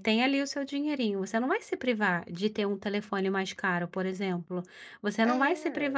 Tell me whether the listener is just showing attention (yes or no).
yes